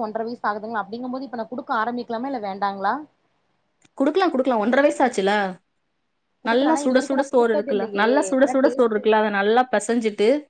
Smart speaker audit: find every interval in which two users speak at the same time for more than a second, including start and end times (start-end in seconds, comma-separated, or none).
6.5-9.0